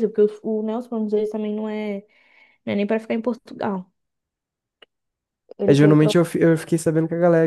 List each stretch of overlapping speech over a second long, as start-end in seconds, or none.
none